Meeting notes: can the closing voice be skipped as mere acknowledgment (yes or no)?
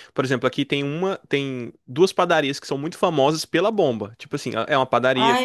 yes